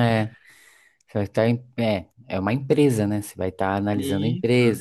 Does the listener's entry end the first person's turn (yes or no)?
no